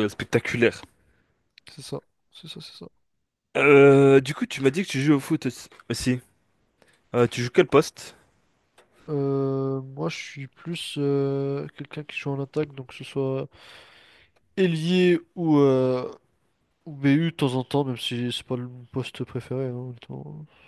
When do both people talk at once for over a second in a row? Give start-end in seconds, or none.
none